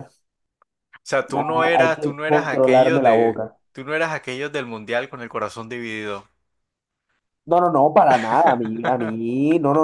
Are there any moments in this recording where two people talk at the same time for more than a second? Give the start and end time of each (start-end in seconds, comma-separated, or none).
1.3-3.5